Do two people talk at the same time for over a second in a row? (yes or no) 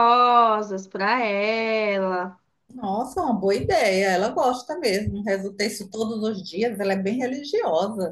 no